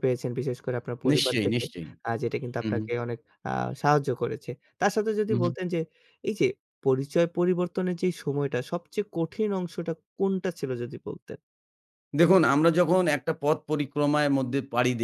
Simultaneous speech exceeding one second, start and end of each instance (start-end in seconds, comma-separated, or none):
none